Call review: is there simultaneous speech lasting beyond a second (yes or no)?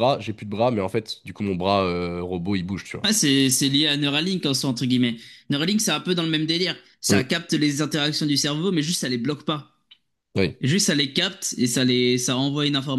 no